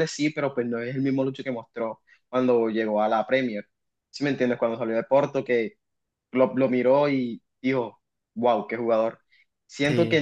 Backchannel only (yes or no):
yes